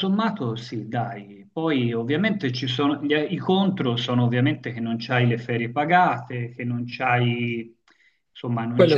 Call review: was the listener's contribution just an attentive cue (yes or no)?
yes